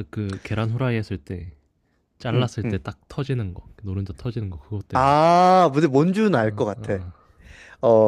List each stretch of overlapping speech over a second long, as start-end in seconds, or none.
none